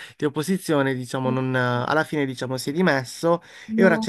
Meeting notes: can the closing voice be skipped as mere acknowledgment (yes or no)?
yes